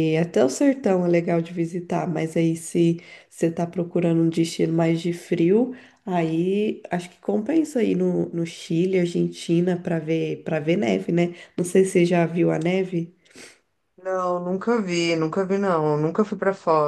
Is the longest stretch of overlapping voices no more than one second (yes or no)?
yes